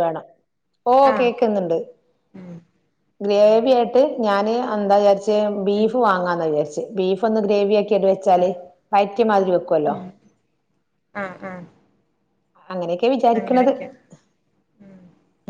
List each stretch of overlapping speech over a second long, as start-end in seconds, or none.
none